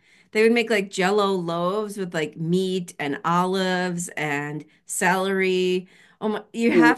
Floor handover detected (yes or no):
no